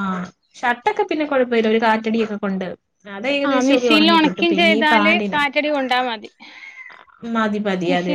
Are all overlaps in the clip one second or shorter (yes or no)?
no